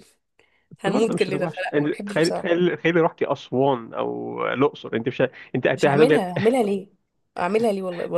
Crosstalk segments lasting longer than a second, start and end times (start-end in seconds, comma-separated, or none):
0.8-2.5